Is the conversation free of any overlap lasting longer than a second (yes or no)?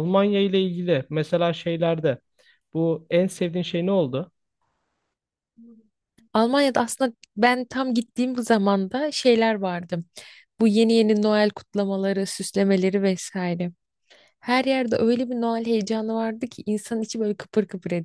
yes